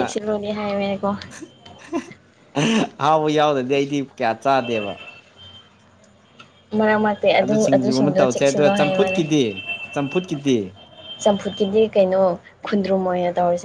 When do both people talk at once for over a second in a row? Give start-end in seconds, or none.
7.7-9.2